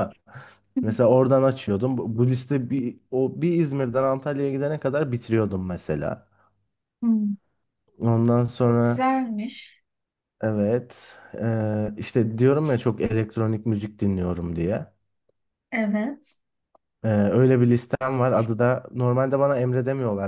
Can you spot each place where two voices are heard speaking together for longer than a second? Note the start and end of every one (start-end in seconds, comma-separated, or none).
none